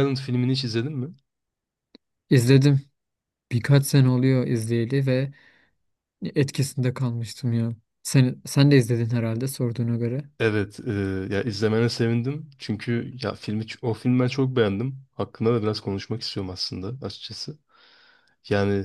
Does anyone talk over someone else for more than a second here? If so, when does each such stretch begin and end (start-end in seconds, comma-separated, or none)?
none